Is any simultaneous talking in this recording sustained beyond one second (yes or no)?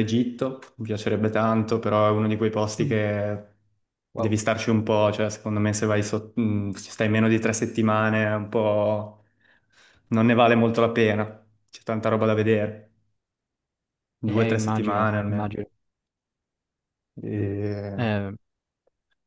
yes